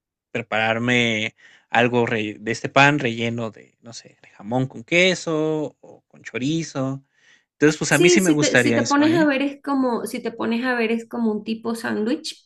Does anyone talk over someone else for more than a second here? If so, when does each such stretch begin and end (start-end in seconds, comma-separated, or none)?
7.9-9.3